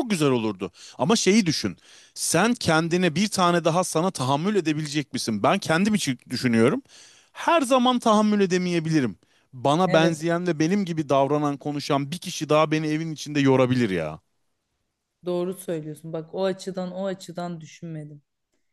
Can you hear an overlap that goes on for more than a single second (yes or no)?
no